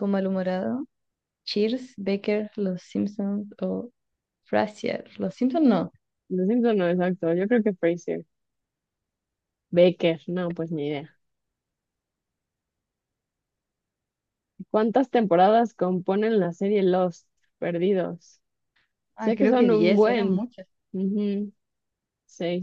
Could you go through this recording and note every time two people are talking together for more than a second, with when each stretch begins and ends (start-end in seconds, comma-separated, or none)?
19.2-20.4